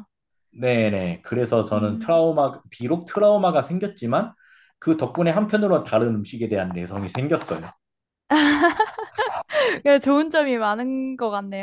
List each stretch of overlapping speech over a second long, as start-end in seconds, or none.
none